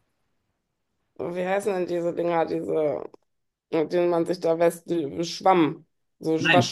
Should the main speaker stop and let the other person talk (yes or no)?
yes